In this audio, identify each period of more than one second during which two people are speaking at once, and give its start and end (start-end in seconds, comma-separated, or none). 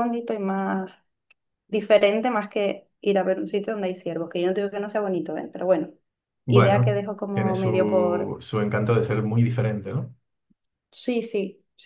6.5-8.4